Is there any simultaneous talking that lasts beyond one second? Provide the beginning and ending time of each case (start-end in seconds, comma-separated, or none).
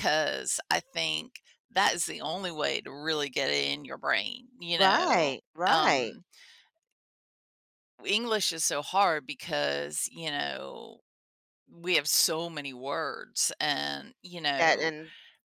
4.8-6.1